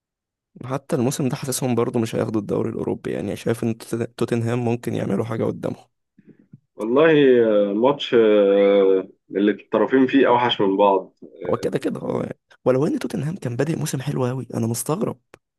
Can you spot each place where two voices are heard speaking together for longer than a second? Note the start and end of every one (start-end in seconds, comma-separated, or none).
none